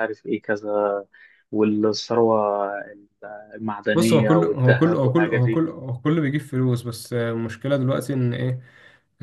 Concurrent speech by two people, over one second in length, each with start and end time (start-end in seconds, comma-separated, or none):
3.9-5.6